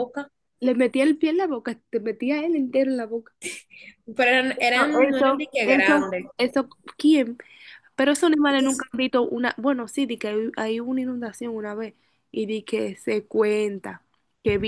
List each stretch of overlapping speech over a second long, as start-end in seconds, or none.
4.5-6.3